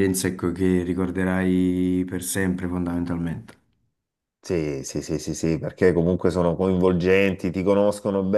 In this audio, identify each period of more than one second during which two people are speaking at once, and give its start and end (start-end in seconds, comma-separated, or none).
none